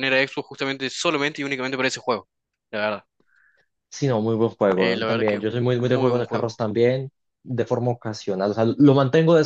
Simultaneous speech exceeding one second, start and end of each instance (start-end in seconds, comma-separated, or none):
4.8-6.5